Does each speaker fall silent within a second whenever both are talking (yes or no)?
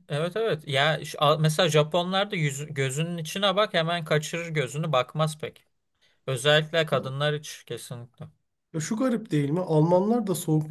yes